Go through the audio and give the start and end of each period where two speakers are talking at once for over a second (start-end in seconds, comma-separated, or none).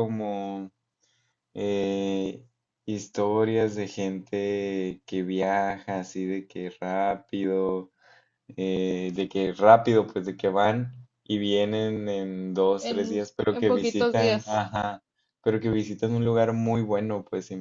12.8-14.6